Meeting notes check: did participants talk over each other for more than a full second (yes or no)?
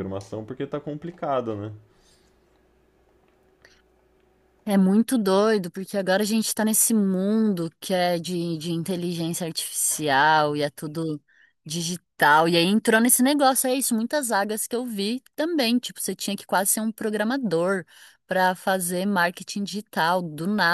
no